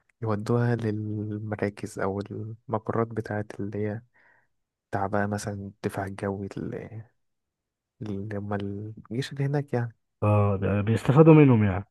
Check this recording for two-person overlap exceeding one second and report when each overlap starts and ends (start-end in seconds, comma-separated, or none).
none